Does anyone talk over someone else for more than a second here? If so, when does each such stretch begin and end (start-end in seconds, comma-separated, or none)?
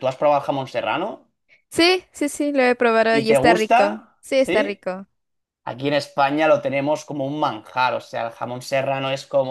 3.1-4.8